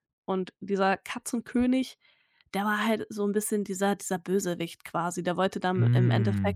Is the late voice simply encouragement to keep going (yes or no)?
yes